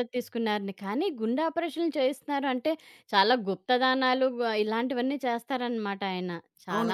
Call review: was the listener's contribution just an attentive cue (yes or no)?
no